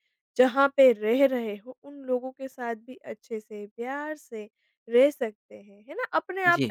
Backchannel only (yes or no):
yes